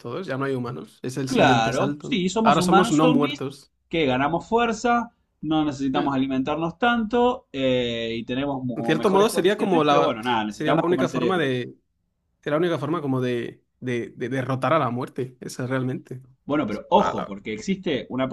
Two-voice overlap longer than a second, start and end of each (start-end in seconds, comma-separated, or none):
1.2-3.4, 8.7-11.6